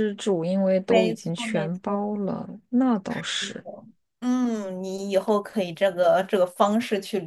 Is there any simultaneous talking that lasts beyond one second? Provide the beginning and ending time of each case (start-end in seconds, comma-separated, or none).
0.9-2.1